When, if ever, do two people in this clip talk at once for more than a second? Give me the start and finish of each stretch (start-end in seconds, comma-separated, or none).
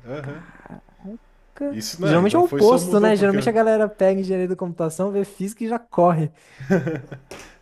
1.7-3.5